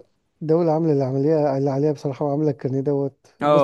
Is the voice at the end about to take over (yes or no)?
yes